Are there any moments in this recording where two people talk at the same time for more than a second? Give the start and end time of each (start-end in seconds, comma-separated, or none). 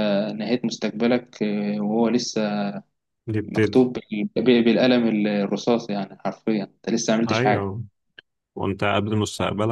none